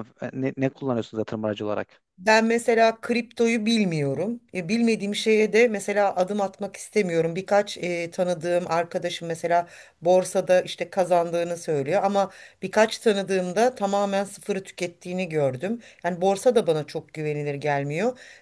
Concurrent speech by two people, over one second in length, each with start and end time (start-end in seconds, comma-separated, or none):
none